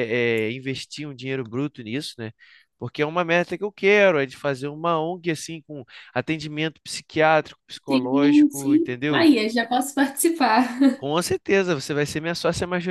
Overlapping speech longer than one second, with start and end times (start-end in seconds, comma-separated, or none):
7.9-9.3